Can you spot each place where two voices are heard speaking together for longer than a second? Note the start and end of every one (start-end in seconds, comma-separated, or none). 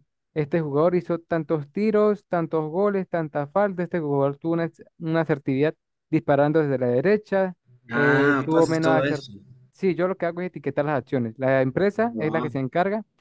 7.9-9.3